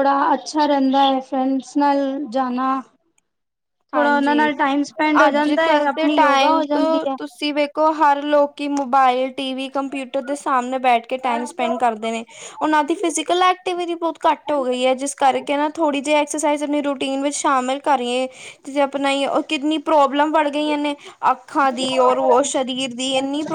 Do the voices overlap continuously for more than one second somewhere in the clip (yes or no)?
yes